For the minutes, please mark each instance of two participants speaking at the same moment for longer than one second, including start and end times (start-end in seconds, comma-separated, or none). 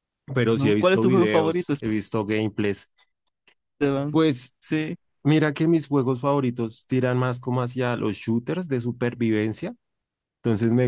0.5-1.7